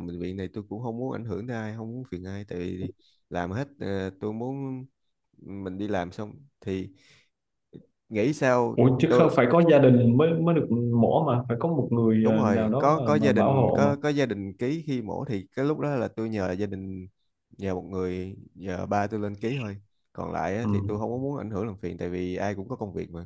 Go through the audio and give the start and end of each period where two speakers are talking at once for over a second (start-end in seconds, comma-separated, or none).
12.2-13.9